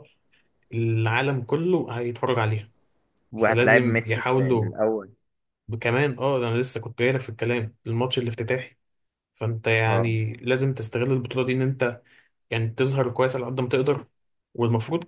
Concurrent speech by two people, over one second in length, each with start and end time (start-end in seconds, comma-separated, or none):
3.4-4.7